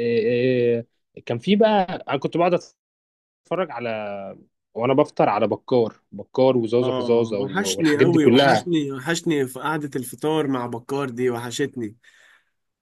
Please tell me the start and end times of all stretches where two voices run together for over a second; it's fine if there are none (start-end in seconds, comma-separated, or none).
6.8-8.7